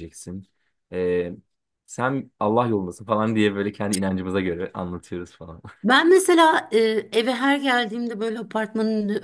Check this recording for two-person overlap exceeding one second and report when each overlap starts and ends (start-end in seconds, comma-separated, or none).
none